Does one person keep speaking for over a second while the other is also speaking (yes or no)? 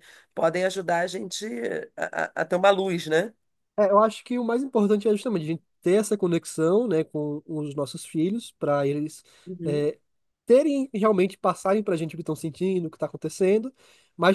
no